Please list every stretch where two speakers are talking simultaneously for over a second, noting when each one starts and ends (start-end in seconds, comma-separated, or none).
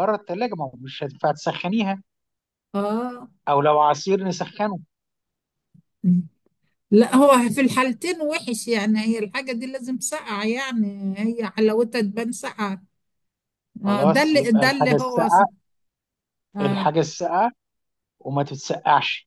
13.8-15.4